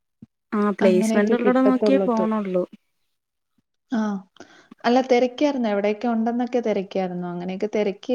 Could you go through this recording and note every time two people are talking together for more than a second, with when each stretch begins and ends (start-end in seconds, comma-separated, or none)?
0.9-2.2